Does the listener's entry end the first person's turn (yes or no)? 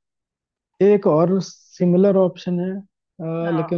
no